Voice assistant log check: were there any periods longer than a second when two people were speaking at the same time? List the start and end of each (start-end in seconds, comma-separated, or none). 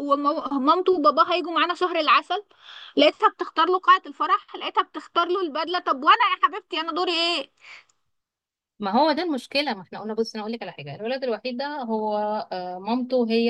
none